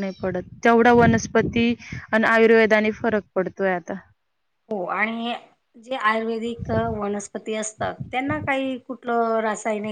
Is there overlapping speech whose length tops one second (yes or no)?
no